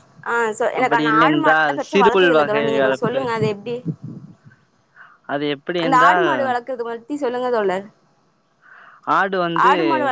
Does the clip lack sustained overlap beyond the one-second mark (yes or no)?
no